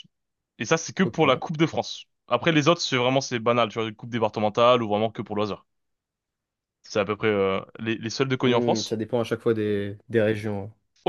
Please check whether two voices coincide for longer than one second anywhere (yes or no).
no